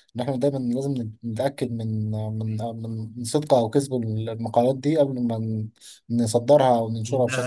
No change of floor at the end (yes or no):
no